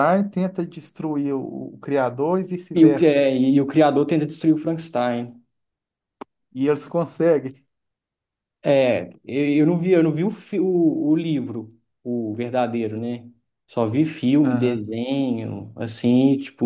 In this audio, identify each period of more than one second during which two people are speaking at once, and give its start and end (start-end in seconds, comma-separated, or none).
none